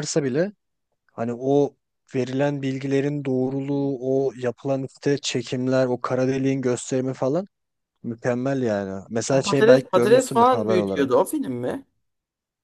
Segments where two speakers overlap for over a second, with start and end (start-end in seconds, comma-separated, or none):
9.3-11.2